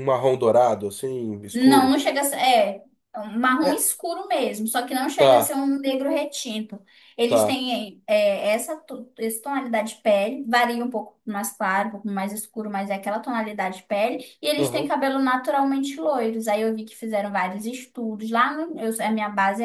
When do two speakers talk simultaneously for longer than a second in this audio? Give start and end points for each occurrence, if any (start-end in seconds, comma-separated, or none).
none